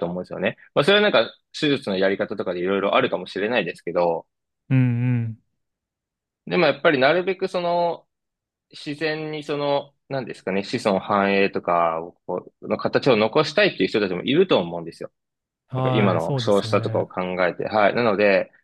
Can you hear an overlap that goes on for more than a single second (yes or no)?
yes